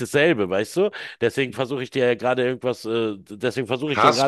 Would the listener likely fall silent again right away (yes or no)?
no